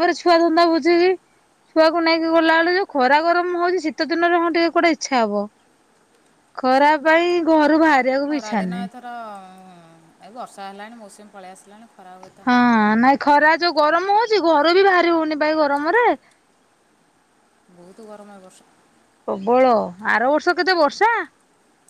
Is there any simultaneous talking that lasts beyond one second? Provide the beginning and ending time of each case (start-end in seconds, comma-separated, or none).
none